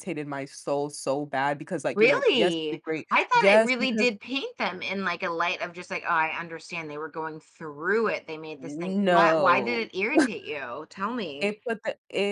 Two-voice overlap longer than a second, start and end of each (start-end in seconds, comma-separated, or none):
1.9-4.1, 8.6-9.9